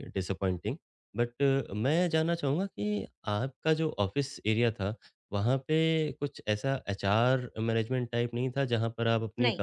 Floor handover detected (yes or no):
no